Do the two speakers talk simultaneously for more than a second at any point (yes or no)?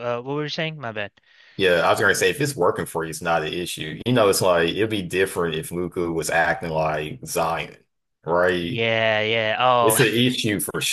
no